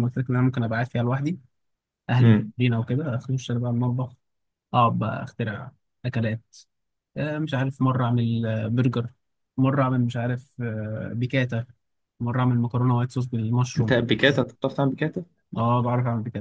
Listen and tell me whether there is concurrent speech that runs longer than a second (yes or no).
no